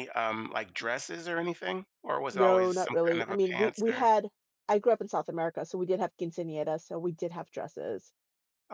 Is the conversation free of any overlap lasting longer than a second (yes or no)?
no